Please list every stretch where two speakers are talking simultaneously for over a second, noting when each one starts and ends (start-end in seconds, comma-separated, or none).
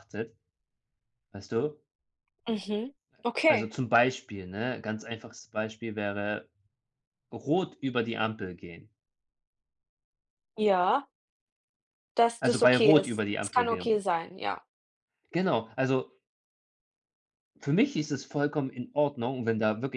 12.4-14.0